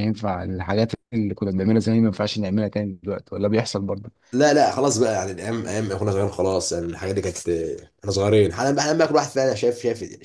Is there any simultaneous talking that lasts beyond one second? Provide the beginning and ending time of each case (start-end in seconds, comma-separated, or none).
none